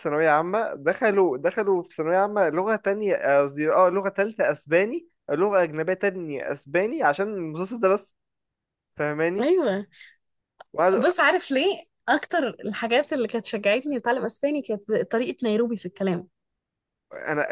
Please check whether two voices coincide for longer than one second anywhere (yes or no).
no